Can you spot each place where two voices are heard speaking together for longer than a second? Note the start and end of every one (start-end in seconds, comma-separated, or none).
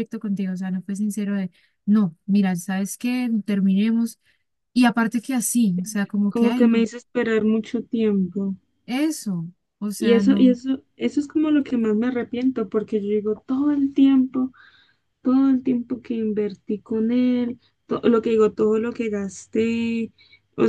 none